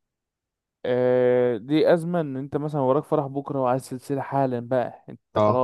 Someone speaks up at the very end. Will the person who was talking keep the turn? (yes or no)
yes